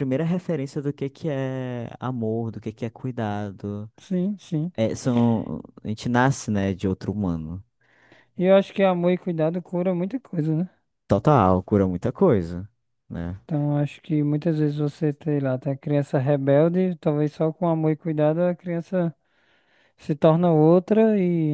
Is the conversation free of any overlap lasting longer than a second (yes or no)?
yes